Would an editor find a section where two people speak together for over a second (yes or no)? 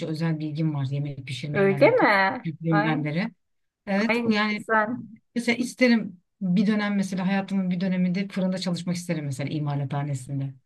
yes